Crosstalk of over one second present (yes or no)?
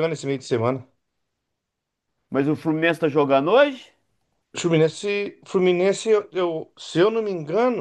no